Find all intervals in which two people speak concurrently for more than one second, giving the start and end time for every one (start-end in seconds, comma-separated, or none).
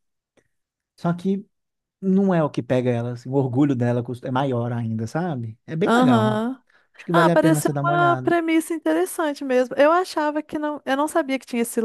7.1-8.4